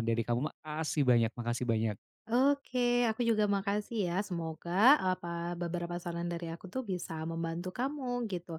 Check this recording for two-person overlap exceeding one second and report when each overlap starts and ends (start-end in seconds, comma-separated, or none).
none